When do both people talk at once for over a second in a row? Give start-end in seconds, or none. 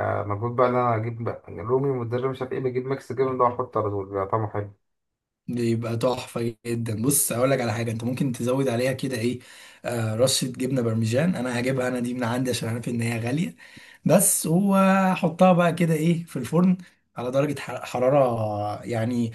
none